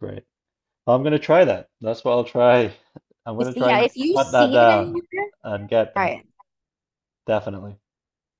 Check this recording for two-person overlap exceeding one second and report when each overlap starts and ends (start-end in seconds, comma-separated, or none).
3.4-5.0